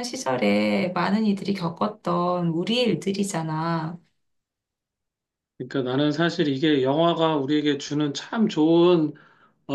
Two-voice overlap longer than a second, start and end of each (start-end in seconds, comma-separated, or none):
none